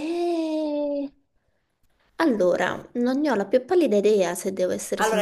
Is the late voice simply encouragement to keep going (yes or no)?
no